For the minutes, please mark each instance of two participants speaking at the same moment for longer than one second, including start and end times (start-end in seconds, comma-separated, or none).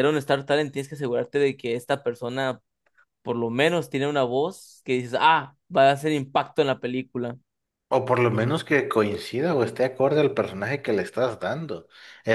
none